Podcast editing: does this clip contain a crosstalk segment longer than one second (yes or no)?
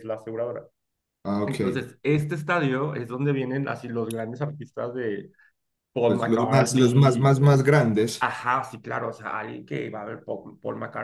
yes